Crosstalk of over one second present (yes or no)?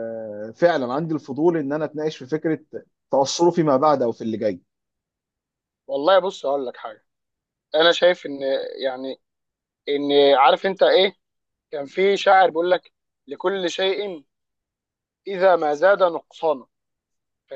no